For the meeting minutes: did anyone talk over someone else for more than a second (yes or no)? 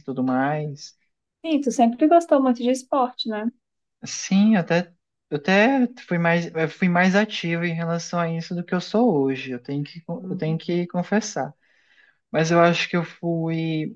no